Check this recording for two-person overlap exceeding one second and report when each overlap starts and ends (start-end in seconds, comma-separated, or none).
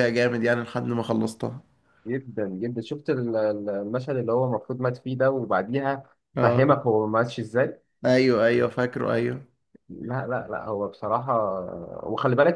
none